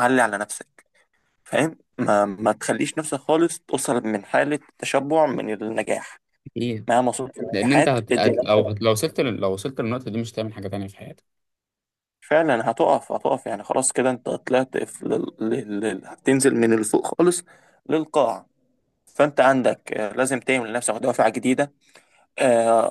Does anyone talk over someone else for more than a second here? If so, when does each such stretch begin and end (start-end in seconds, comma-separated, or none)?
7.5-9.0